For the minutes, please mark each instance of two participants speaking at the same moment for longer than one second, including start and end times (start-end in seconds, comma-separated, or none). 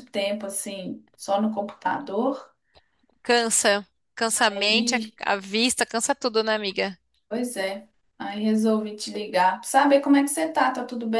none